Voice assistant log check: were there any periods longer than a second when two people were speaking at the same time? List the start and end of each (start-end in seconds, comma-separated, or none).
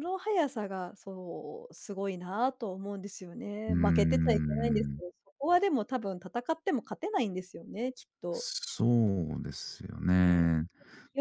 3.7-5.0